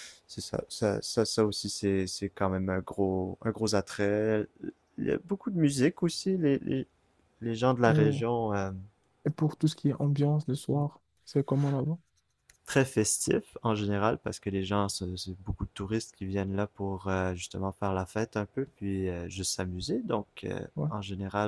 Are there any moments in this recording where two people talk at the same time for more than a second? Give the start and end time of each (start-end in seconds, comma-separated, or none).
none